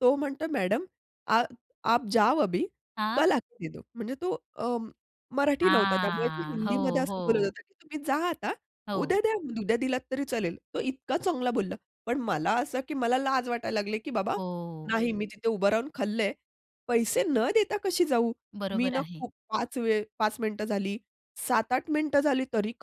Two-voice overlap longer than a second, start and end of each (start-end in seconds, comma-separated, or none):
5.6-7.5